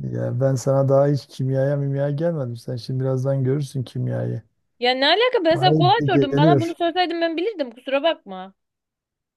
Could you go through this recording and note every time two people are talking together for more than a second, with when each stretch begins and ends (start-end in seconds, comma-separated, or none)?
5.5-6.8